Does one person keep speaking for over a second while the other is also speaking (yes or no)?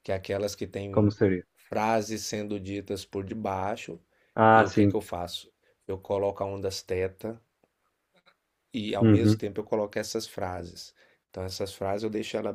no